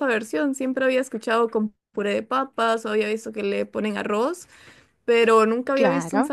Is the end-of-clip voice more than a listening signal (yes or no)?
yes